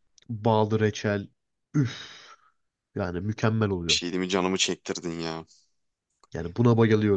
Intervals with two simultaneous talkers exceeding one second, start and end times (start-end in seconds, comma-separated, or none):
none